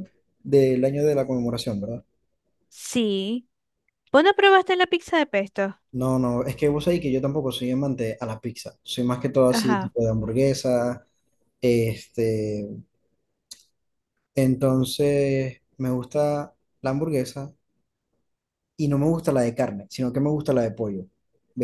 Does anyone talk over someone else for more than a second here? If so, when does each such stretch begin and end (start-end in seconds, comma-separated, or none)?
none